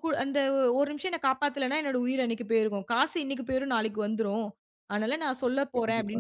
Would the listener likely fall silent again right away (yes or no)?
yes